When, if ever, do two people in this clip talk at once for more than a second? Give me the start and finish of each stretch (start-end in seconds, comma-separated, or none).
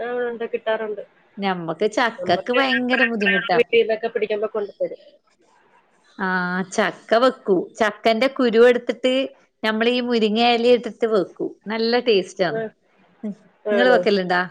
2.2-3.6